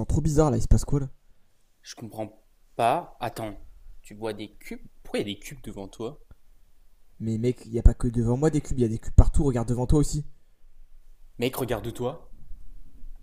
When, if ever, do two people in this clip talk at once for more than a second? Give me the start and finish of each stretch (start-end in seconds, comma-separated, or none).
none